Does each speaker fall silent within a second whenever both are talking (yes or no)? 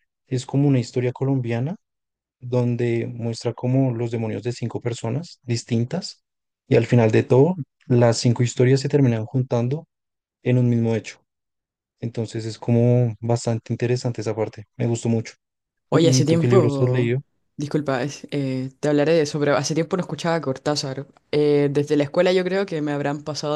no